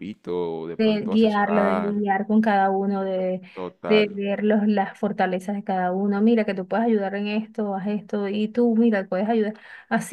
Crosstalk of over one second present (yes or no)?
yes